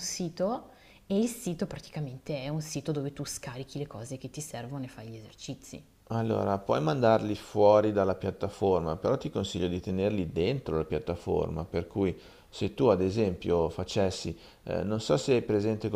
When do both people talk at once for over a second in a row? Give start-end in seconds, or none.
none